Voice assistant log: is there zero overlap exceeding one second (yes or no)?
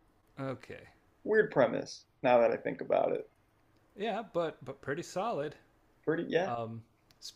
yes